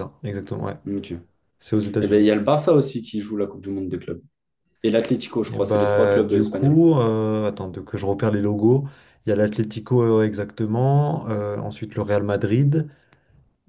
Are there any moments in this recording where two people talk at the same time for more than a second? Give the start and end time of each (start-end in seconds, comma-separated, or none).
5.5-6.8